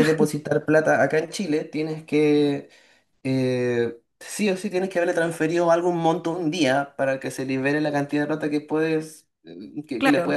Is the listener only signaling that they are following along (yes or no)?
no